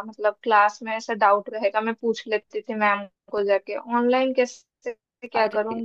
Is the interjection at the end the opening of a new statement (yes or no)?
no